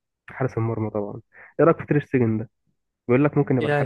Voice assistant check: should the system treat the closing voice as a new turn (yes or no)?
yes